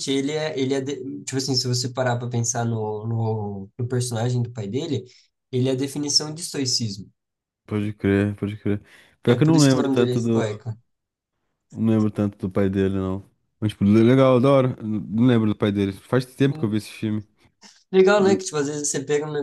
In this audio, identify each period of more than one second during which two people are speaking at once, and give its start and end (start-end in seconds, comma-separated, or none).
9.3-10.6